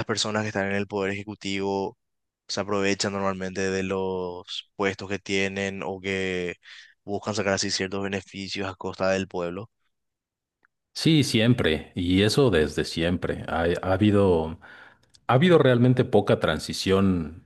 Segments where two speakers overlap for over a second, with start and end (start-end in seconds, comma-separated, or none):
none